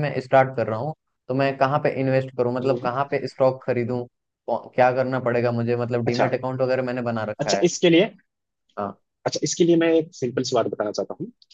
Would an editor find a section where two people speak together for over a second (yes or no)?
no